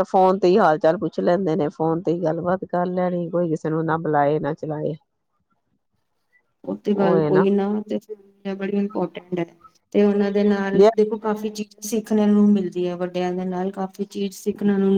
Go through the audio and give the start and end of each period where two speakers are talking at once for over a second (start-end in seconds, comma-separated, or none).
none